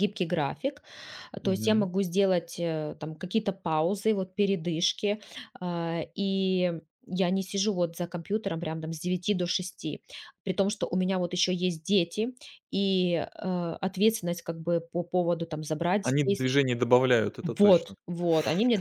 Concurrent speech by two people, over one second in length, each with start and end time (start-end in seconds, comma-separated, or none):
none